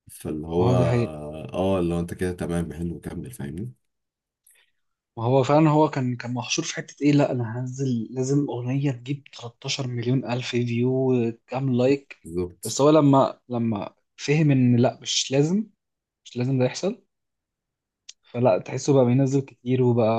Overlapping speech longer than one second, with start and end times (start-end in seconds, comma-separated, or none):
none